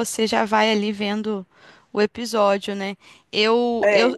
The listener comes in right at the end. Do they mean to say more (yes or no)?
no